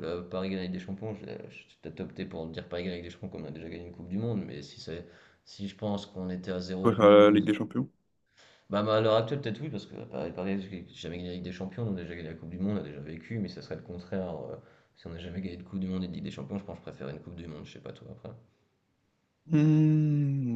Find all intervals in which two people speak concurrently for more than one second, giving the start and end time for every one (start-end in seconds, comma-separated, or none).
none